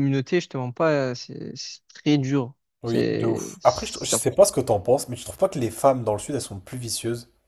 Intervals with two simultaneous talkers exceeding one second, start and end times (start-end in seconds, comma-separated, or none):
2.8-4.2